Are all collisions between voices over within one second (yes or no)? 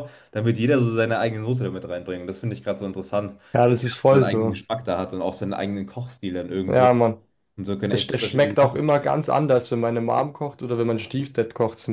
no